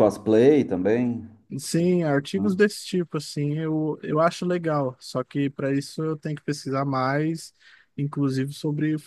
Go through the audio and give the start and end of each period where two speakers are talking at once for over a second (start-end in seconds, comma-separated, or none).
none